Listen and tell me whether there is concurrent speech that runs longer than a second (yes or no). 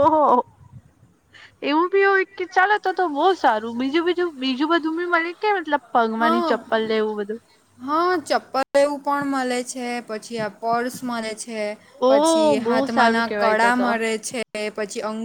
yes